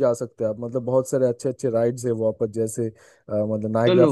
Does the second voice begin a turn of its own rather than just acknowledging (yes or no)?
no